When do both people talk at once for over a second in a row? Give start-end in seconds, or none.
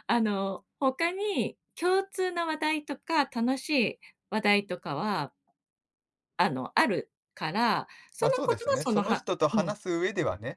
8.2-9.7